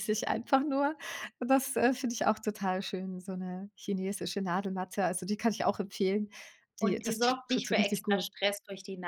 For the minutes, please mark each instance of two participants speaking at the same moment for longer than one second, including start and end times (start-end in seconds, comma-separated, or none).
6.8-8.2